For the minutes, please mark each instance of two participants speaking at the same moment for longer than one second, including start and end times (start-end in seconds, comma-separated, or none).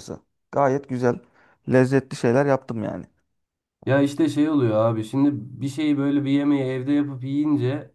none